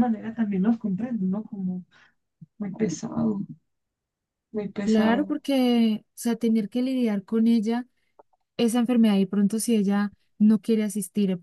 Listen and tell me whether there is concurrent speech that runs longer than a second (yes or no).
no